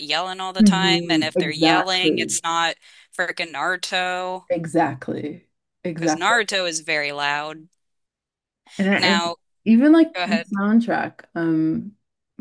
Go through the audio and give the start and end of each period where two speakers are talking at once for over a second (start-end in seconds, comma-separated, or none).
0.6-2.4